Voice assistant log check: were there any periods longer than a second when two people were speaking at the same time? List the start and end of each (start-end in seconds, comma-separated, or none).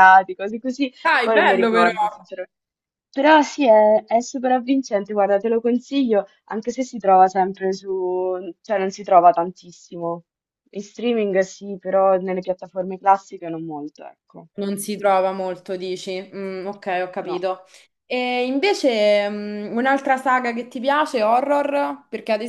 1.0-2.3